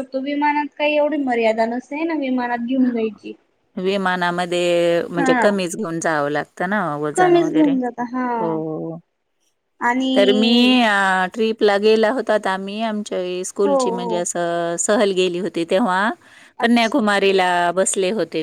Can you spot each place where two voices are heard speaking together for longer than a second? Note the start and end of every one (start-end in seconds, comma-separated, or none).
none